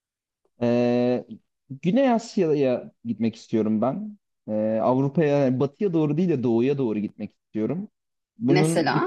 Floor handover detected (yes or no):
no